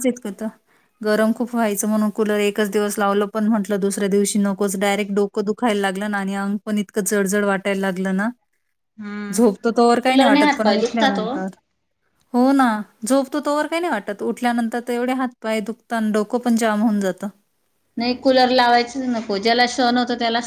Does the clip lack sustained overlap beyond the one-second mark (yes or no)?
no